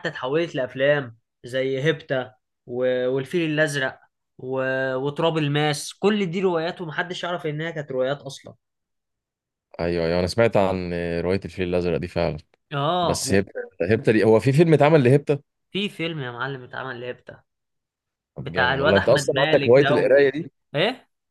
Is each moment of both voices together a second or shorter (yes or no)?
no